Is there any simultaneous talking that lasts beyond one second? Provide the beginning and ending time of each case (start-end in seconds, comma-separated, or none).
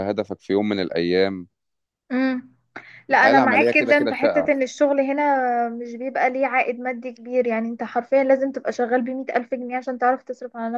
3.1-4.5